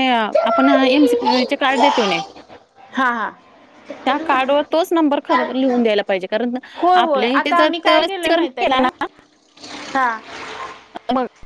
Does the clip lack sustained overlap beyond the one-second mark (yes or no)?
no